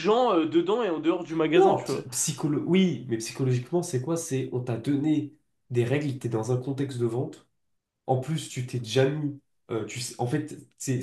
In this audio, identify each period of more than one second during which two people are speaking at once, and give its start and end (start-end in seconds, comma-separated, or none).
none